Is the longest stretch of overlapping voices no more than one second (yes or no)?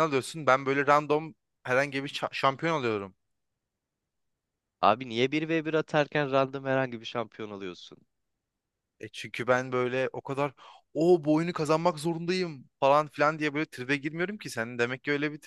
yes